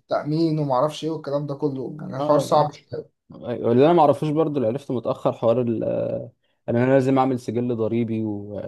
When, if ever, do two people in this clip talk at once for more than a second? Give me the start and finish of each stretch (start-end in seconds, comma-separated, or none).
none